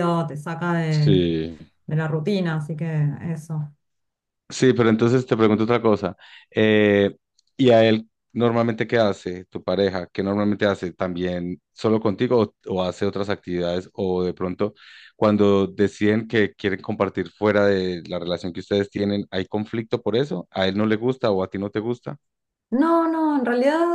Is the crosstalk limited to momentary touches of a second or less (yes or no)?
yes